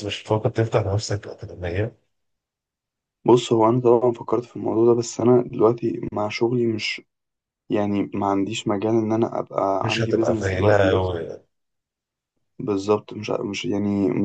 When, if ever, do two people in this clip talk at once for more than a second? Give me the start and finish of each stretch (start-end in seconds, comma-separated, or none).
9.8-11.1